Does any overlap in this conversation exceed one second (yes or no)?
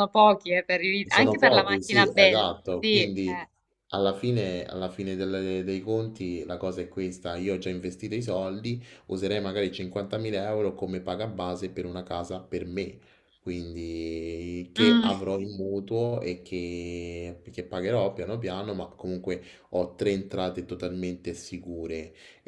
yes